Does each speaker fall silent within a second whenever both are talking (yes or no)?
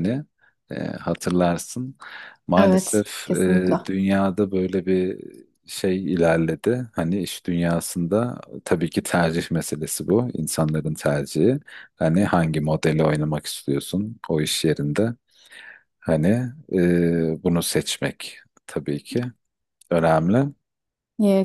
no